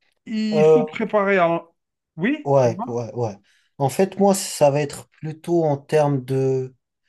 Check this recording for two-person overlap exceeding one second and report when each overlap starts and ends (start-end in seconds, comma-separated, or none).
none